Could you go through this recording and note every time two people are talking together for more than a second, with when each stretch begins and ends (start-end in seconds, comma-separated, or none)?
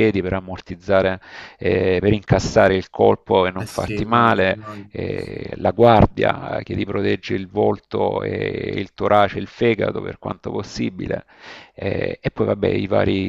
3.6-5.4